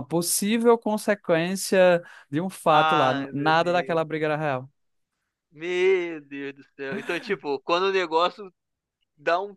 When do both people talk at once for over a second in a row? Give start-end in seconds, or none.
2.7-4.0